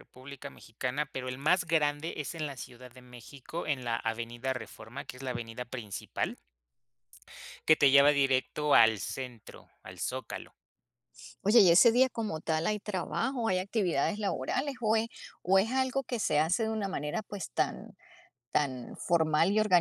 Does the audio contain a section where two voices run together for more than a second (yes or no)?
no